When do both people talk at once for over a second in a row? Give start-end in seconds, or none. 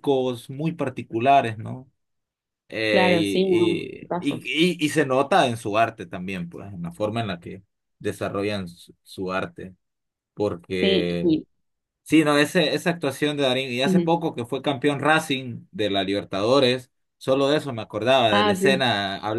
2.9-4.5